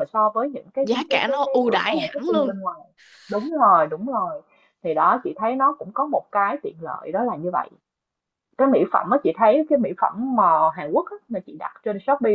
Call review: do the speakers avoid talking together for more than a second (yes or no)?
no